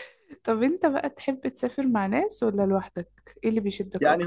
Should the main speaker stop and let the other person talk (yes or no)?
yes